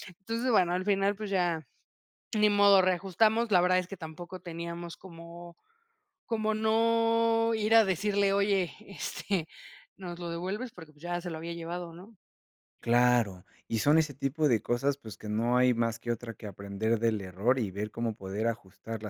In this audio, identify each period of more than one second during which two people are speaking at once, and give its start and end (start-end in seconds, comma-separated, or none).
none